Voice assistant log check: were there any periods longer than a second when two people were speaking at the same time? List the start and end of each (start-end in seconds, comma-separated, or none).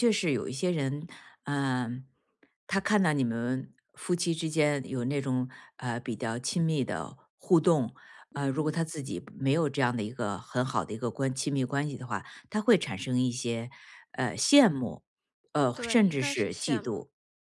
15.7-17.0